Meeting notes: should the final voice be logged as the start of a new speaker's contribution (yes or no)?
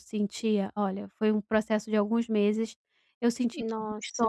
no